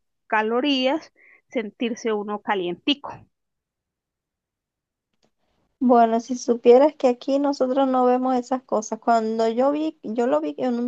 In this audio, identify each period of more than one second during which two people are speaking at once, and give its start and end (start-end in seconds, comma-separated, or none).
none